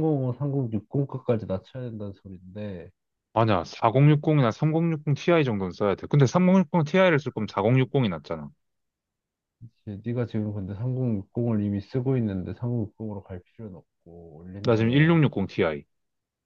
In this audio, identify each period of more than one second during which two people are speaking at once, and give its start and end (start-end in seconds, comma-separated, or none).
none